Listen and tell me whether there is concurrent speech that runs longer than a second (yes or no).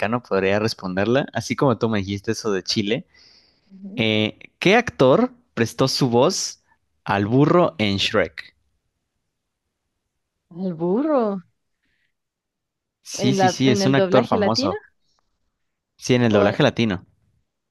yes